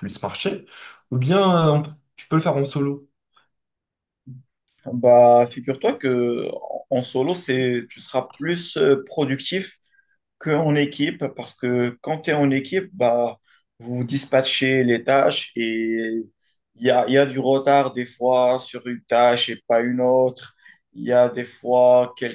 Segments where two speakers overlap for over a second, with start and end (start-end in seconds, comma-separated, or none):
none